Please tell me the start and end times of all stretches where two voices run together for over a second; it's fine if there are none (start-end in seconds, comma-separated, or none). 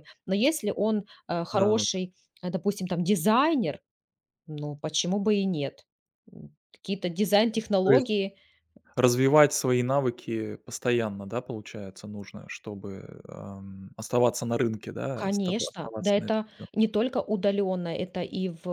15.2-16.9